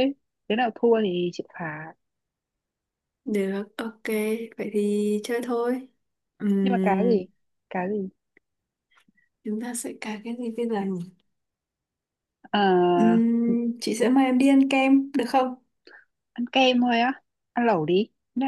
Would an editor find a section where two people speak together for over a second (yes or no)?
no